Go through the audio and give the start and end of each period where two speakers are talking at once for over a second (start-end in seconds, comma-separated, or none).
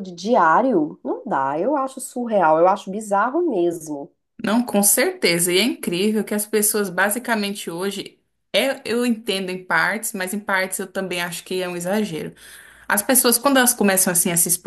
none